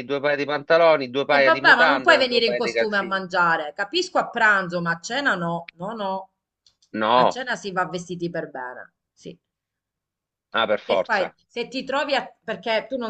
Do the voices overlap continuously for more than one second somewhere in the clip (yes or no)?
yes